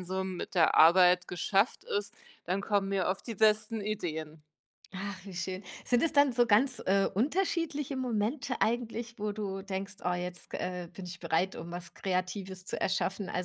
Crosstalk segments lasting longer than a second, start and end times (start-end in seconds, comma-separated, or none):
none